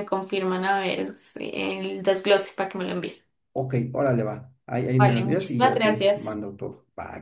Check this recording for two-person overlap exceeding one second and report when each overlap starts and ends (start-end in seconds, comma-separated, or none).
4.9-6.4